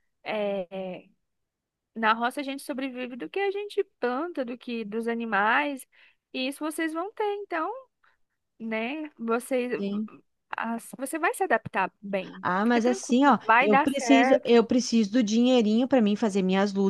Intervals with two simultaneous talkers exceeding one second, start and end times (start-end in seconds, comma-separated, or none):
12.4-14.6